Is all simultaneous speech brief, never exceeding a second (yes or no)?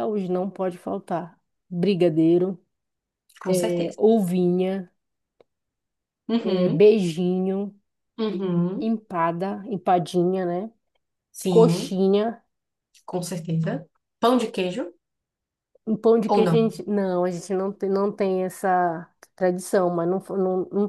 yes